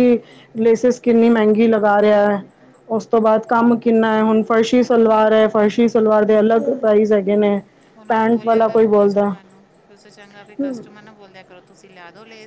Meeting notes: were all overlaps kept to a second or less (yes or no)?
no